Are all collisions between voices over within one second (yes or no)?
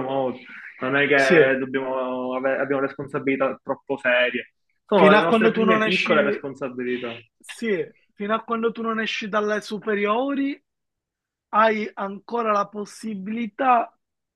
no